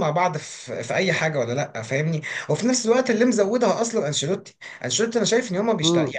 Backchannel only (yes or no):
yes